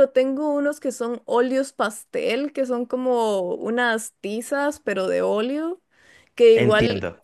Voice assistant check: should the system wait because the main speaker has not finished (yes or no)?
yes